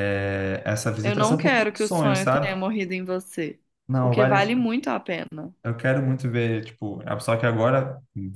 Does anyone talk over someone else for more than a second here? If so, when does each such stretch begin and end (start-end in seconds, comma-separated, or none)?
1.0-2.6